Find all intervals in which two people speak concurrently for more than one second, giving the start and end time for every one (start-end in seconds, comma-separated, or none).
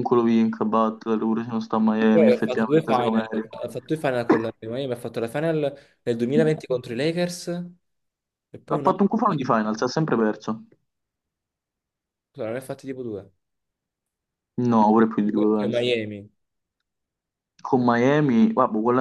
2.1-3.5